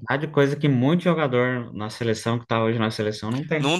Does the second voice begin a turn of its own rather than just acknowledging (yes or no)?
yes